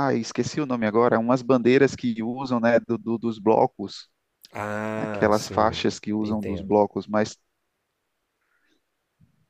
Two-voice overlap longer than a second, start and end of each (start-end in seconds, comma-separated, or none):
5.0-6.8